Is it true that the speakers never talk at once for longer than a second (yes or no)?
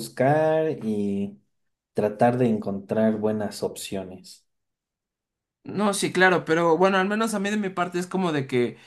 yes